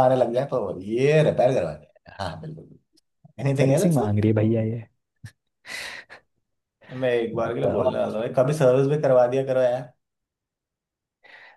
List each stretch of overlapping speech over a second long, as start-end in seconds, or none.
none